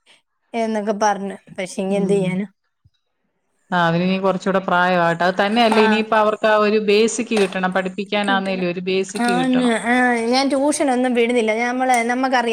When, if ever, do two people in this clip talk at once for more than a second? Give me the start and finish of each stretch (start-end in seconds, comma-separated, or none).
none